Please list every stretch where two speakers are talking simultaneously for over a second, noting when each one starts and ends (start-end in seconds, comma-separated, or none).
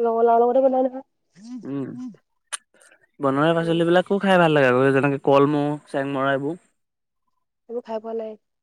none